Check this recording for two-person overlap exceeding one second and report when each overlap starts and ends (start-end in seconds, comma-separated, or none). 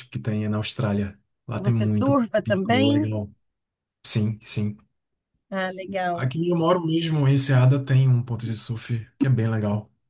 1.6-3.1